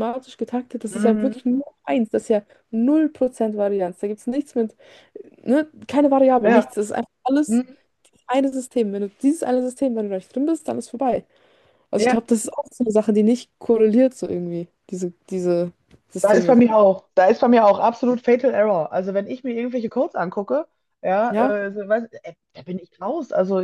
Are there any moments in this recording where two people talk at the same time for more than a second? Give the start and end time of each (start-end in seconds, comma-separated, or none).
none